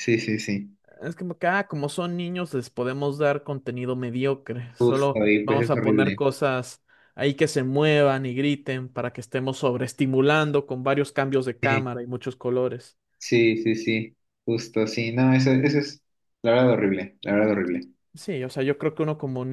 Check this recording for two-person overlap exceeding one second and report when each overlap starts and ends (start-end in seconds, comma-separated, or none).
4.8-6.2